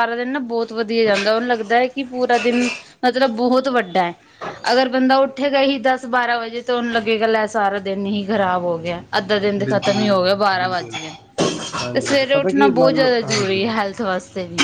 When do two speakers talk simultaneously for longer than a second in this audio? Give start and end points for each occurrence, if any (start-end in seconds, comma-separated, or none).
9.6-11.0, 11.9-13.6